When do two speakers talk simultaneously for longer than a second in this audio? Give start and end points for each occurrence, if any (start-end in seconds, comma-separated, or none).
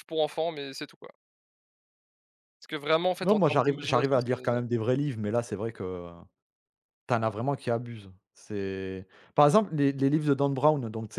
3.2-4.6